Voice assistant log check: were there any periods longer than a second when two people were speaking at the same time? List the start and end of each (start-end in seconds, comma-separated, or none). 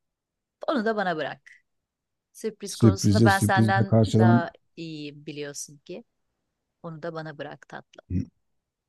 2.7-4.5